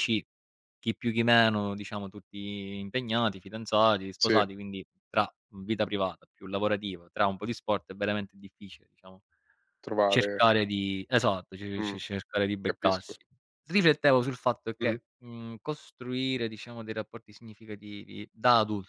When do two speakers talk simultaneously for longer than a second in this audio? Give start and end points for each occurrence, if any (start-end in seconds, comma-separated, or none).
none